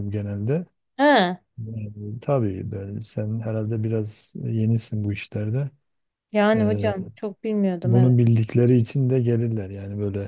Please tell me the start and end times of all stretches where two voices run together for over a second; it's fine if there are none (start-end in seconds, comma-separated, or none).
none